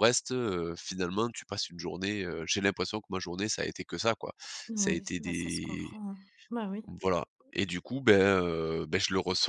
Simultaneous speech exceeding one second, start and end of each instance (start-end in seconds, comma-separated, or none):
4.8-6.0